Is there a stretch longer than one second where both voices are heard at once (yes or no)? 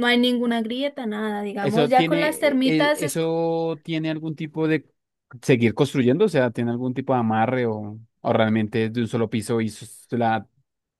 yes